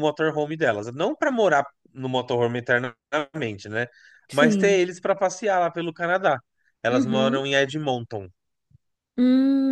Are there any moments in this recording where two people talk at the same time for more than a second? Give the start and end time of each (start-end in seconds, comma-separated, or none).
none